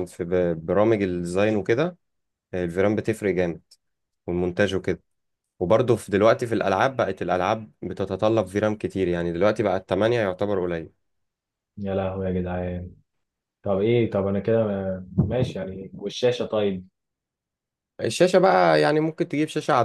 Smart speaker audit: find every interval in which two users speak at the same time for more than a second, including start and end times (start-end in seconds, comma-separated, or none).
none